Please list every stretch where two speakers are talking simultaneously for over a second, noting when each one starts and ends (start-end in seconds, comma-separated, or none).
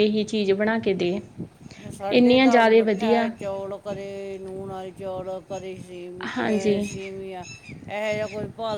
none